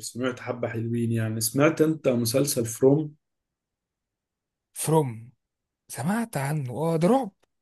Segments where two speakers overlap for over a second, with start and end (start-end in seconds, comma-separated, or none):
none